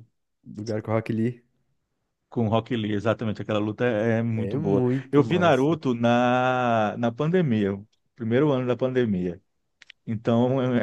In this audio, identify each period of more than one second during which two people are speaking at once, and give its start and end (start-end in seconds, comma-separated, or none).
4.3-5.8